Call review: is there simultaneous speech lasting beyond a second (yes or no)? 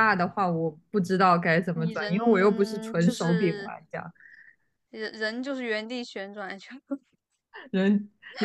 yes